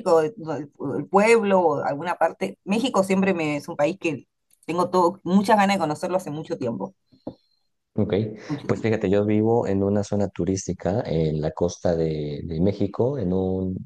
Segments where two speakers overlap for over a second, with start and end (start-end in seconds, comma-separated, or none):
none